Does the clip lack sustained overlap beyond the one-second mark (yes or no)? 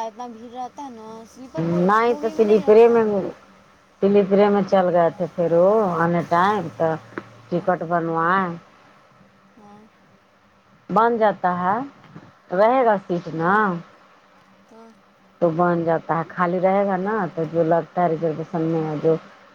no